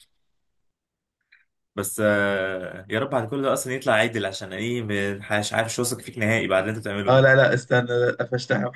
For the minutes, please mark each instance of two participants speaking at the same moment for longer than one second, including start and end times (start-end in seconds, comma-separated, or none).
none